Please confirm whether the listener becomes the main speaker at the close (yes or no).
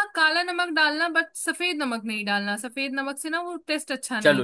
yes